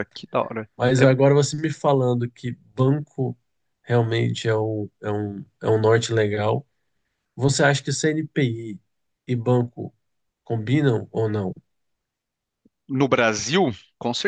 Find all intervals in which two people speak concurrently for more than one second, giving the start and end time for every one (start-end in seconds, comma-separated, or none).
none